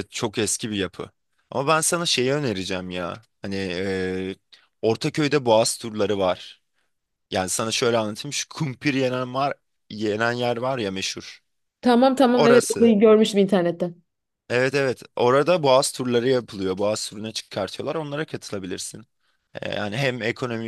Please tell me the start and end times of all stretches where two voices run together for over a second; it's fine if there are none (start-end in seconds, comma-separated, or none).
none